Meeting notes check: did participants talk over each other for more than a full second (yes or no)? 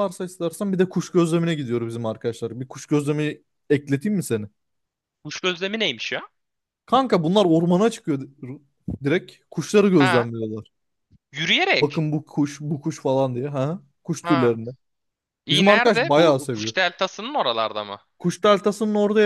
yes